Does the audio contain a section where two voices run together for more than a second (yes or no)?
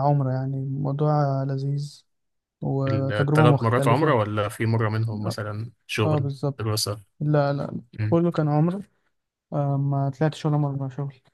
yes